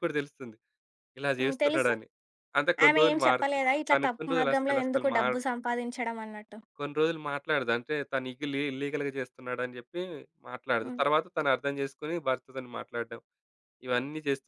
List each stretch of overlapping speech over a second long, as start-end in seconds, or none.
2.9-5.4